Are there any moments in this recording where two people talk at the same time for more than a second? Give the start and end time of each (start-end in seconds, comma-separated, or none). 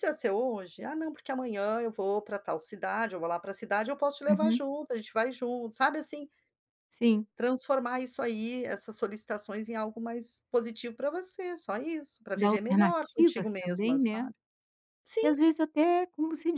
12.4-14.3